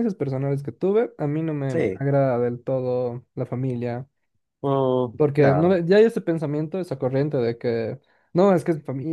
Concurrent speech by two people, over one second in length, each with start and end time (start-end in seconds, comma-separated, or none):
none